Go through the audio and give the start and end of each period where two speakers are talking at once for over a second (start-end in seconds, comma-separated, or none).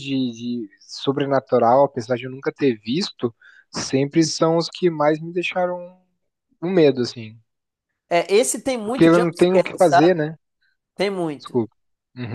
8.8-10.3